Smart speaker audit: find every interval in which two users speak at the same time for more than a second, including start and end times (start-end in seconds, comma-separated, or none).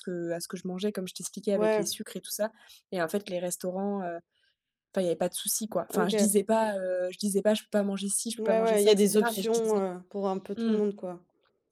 8.3-9.8